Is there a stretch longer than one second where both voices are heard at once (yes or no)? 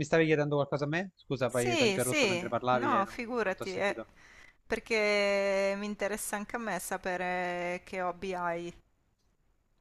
yes